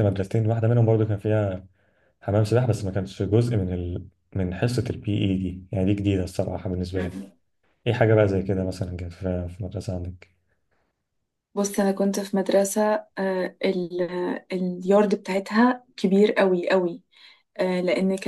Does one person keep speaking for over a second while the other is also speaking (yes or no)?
no